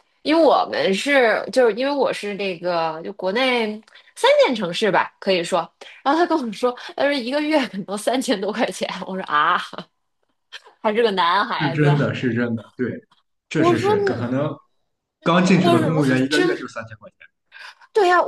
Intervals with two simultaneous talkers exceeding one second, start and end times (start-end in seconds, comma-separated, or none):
15.2-16.6